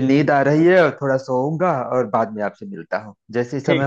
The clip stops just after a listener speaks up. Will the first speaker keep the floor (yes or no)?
yes